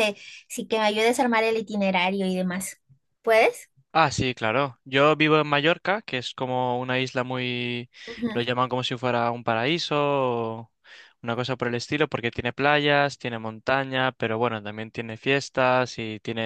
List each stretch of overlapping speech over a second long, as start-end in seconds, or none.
none